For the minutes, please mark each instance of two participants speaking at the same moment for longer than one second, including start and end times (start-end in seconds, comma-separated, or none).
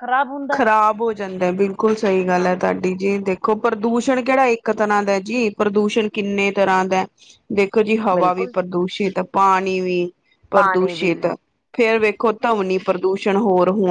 none